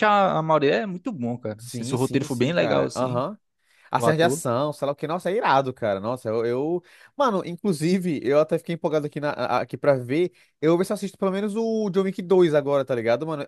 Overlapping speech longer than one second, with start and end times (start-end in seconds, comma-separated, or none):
1.6-3.2